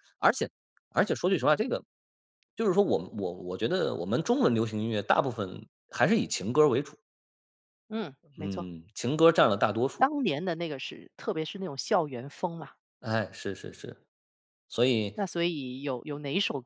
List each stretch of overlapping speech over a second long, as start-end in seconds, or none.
none